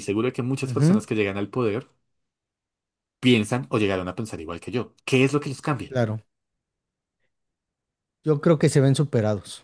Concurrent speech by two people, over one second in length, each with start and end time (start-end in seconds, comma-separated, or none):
none